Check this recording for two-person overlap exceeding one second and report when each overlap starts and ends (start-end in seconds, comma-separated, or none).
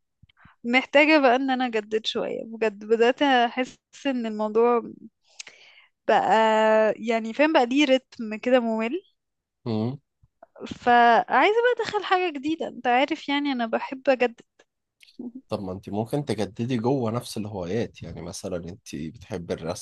none